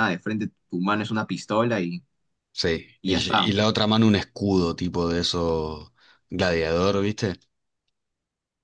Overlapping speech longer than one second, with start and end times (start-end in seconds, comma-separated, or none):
none